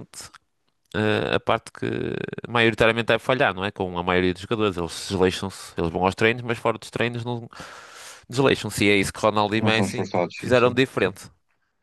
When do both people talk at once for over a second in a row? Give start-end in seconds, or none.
9.5-11.1